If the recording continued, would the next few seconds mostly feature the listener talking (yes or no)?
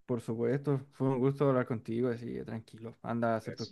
no